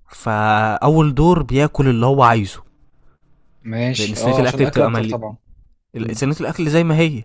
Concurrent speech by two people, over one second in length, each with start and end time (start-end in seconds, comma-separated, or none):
4.0-5.2